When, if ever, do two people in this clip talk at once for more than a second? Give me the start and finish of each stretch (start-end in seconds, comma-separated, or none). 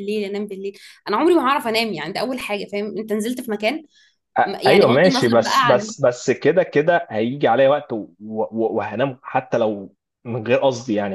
4.5-5.9